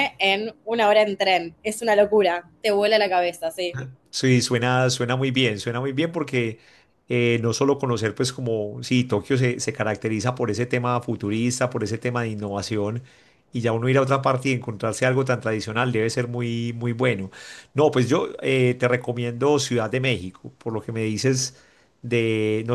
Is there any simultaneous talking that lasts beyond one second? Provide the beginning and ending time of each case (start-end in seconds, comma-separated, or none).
none